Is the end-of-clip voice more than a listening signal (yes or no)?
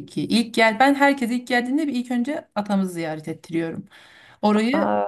no